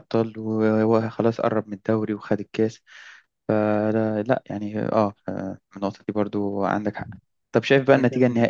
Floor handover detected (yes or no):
no